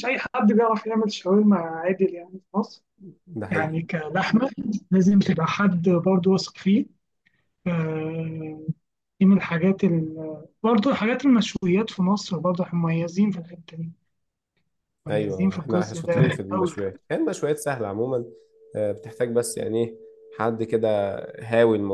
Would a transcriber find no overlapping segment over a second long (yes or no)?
no